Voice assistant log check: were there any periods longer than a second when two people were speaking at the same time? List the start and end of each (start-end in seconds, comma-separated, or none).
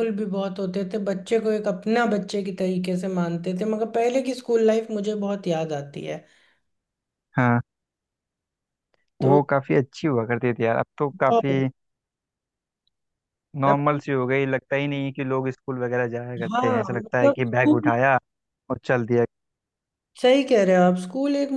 16.5-17.9